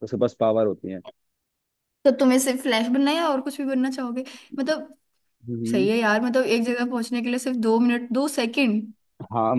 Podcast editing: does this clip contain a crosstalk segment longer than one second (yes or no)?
no